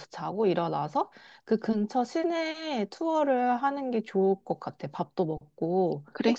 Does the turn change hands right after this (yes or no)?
no